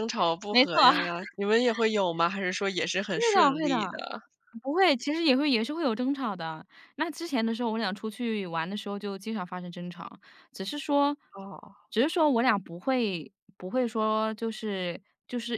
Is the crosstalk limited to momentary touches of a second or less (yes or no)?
yes